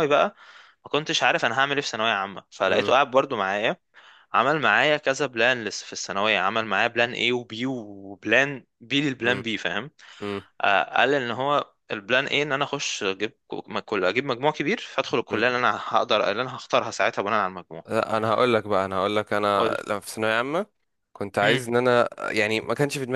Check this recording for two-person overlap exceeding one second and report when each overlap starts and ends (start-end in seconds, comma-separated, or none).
none